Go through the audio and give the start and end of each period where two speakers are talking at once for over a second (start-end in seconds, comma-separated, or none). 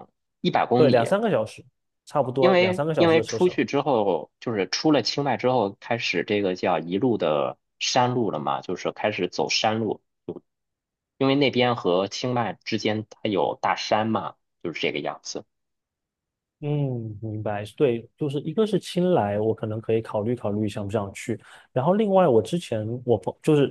2.4-3.6